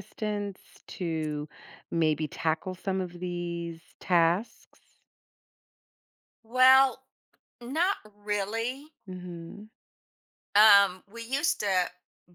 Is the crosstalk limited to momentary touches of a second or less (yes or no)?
yes